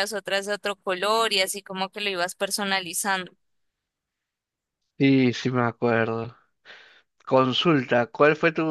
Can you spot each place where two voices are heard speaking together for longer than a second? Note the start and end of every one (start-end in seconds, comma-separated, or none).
none